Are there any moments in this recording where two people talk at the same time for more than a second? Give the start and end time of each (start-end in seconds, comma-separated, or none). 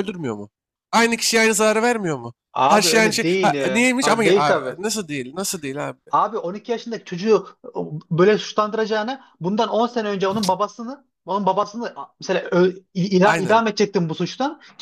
2.5-4.8